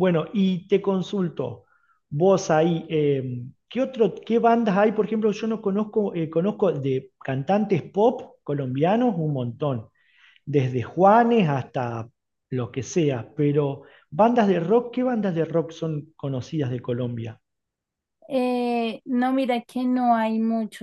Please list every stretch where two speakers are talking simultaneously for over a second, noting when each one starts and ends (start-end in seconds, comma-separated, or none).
none